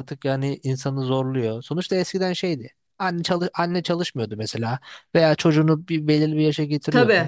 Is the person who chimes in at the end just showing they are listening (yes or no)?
yes